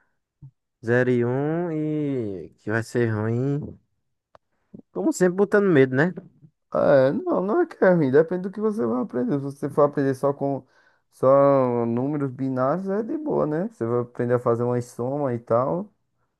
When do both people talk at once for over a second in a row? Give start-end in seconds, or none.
none